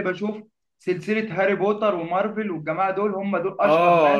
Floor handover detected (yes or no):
yes